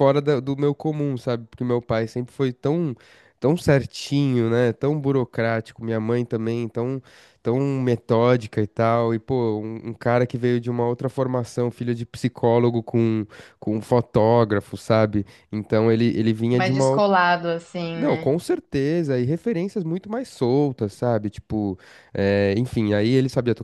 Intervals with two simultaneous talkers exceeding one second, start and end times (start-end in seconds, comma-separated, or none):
none